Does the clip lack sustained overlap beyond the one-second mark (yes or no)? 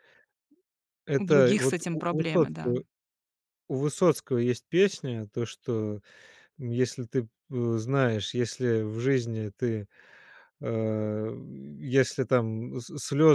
no